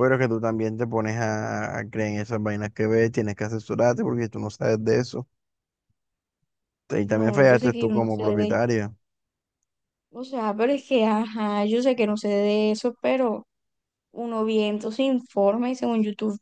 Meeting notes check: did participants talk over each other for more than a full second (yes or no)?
yes